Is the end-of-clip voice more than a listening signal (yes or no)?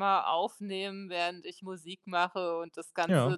no